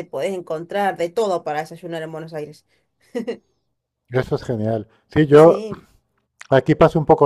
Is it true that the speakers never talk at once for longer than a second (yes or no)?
yes